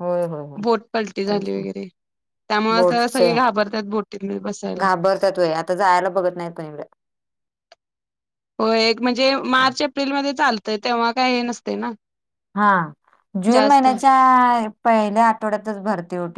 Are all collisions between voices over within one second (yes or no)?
yes